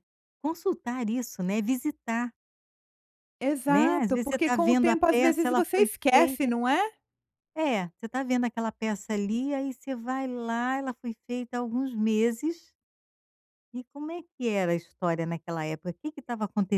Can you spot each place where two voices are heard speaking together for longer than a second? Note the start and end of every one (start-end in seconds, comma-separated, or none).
3.7-6.4